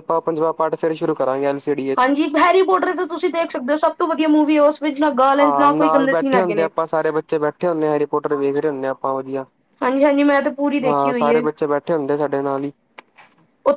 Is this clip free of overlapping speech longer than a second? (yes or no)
yes